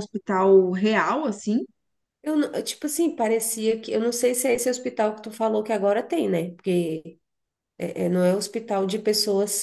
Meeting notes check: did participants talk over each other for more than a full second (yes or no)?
no